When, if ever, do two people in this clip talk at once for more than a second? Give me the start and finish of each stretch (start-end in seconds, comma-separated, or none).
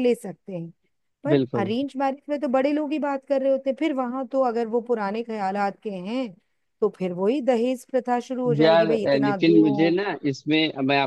8.6-10.0